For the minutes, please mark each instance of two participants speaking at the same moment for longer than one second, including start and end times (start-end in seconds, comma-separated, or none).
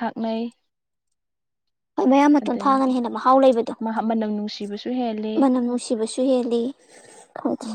none